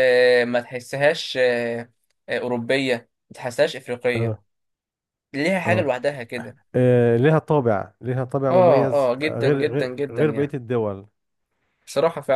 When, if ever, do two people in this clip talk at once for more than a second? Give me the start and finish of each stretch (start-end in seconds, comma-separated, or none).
8.5-10.6